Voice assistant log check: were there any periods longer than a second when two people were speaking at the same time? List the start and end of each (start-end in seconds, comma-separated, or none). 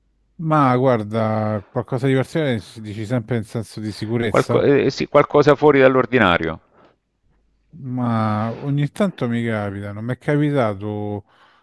none